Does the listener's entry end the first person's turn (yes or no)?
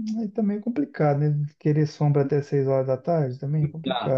yes